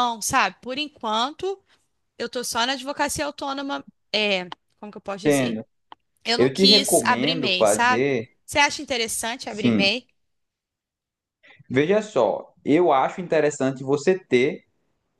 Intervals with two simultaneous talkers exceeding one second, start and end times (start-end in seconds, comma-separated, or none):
6.4-8.0